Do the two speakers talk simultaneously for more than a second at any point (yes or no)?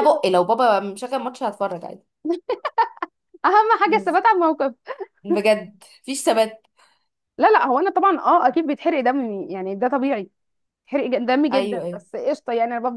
no